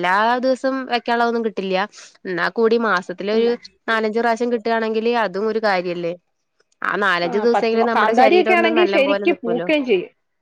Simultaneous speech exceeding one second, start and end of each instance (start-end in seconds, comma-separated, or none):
7.3-9.7